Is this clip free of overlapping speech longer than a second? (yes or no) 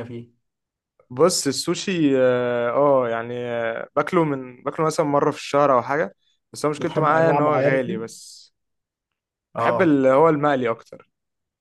no